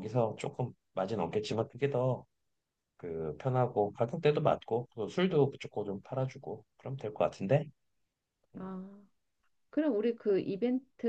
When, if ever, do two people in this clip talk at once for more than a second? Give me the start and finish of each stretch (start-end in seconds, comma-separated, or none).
none